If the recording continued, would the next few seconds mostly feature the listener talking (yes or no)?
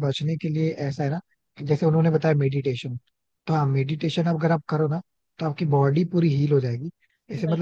no